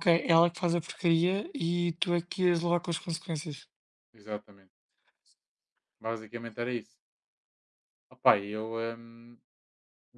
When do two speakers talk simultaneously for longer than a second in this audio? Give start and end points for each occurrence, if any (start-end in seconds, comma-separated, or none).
none